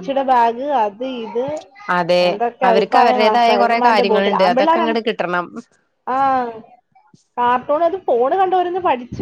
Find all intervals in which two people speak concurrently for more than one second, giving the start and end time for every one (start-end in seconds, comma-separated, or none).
2.7-5.0